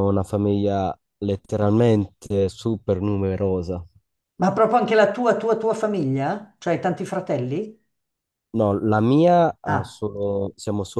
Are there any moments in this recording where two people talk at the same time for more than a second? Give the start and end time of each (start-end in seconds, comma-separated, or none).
none